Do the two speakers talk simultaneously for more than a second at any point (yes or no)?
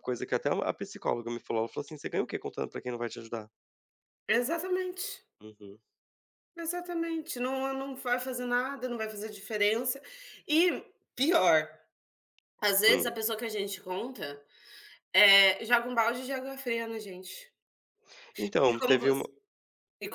no